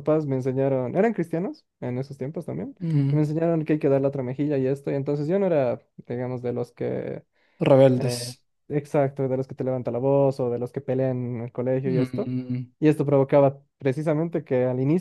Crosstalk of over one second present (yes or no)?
no